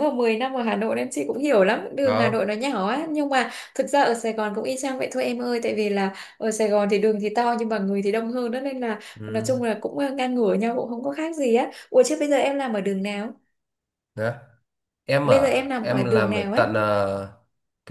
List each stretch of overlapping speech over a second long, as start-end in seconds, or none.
15.2-16.7